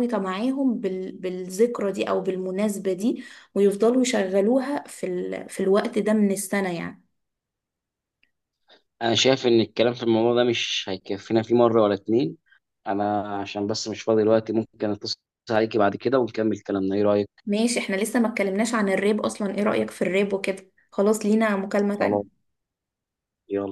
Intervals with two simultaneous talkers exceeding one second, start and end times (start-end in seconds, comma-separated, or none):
none